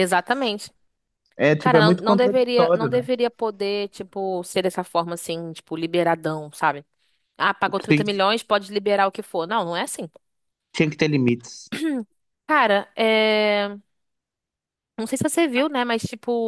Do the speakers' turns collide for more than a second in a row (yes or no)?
yes